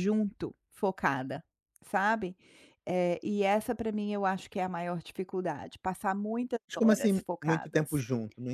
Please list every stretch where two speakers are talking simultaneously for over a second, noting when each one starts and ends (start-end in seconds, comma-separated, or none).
6.7-8.0